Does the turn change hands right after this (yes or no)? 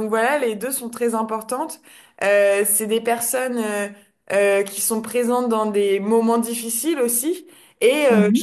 no